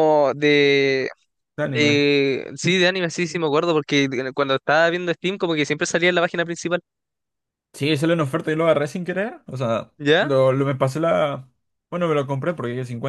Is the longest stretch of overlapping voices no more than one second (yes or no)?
yes